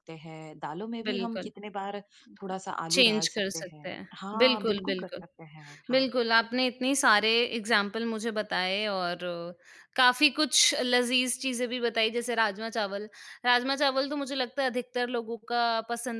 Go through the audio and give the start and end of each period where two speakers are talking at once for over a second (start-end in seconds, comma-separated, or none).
2.9-5.2